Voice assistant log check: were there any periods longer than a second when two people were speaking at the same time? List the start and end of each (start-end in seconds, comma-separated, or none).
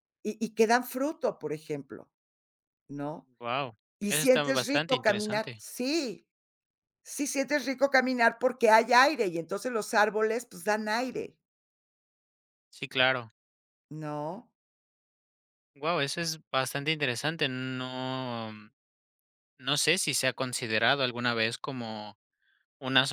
4.0-5.6